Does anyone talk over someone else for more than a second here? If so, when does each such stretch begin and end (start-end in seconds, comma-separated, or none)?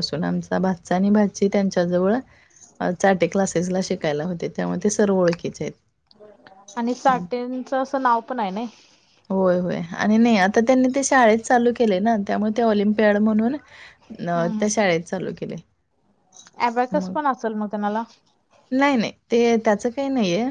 none